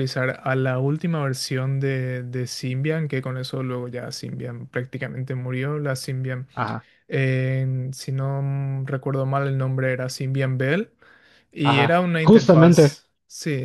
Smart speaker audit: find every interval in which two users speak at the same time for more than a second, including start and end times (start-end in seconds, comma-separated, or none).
11.6-13.0